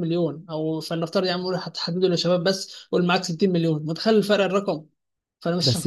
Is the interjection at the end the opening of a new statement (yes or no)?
no